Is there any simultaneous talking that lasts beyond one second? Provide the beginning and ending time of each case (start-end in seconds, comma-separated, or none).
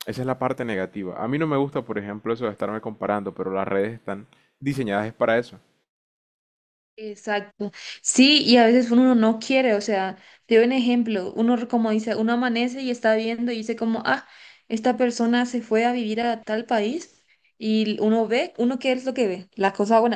none